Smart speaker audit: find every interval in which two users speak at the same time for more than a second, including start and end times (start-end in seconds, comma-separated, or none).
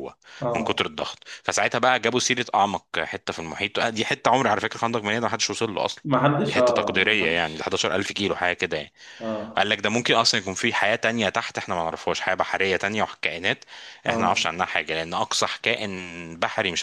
6.5-7.8